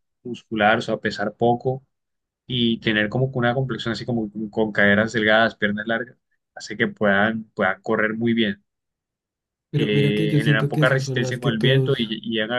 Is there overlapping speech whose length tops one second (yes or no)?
yes